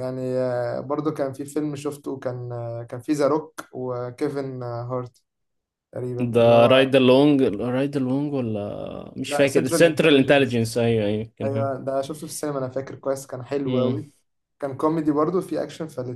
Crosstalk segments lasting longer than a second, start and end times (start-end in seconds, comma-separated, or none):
9.3-10.8